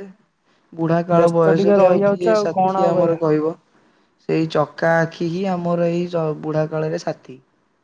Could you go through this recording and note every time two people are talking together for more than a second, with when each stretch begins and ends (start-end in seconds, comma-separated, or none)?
1.2-3.2